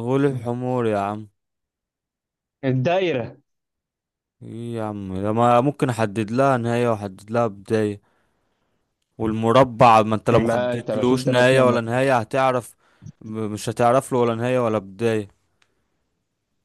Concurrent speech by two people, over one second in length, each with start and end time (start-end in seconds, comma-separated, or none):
10.3-11.8